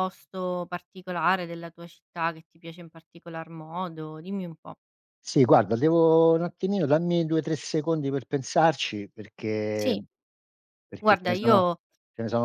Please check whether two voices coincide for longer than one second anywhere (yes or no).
no